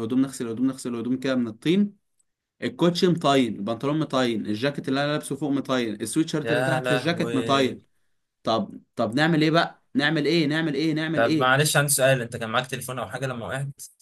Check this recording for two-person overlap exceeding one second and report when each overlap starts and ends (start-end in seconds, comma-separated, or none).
6.4-7.8